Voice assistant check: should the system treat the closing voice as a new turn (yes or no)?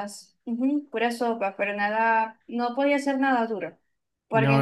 no